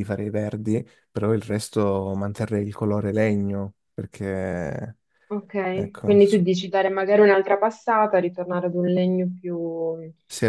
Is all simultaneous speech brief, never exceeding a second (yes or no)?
yes